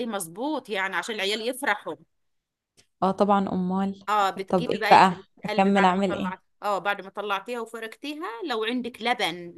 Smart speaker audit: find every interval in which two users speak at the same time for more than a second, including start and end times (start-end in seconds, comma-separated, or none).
4.5-6.3